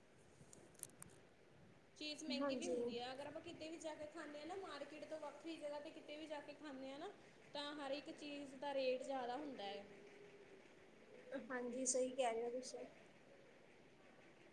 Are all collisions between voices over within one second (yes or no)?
yes